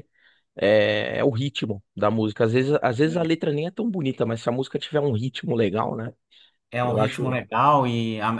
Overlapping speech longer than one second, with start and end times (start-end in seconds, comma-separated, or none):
none